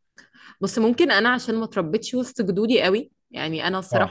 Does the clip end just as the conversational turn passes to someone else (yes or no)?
no